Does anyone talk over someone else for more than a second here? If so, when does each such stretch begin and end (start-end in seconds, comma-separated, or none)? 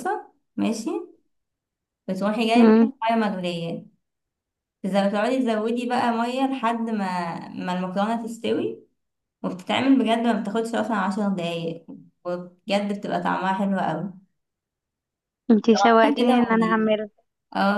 15.6-16.9